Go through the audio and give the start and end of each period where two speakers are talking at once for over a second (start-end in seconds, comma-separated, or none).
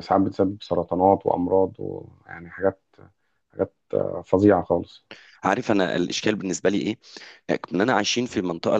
none